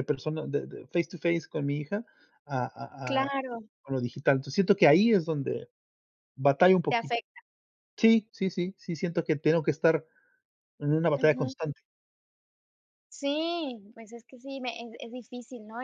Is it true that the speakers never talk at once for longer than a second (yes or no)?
yes